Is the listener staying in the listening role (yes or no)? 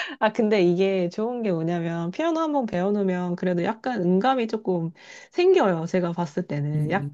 no